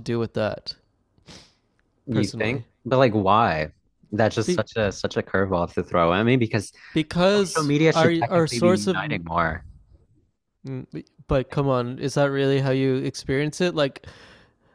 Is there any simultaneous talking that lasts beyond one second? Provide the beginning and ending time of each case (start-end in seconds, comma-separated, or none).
7.5-9.0